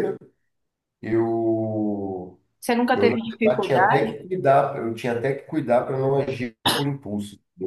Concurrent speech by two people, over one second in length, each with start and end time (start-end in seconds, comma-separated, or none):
2.9-4.1